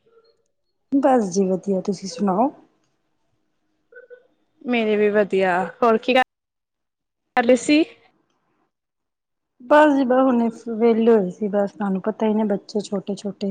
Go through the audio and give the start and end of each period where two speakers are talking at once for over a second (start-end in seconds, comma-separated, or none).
none